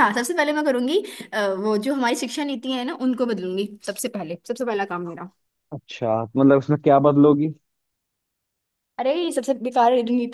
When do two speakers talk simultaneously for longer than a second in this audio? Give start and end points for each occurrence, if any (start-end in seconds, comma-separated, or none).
none